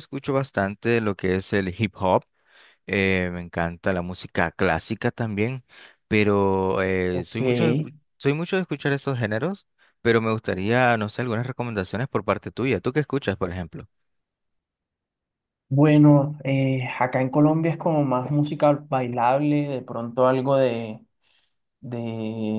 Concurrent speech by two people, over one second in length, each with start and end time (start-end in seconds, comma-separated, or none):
none